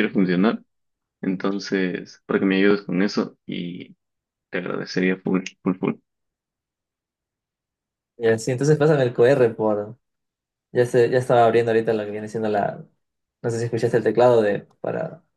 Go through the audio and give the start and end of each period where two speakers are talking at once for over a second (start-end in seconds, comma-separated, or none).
none